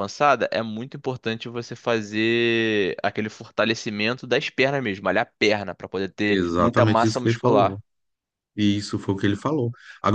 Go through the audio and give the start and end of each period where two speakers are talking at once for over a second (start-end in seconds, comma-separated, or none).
6.3-7.8